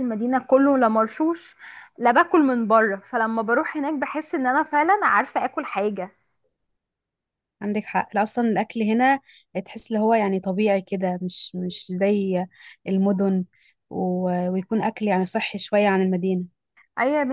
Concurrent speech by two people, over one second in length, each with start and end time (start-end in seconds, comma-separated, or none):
none